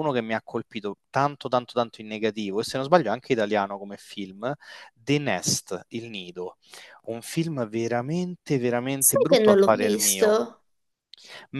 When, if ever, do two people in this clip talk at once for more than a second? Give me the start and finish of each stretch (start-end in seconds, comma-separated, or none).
9.0-10.4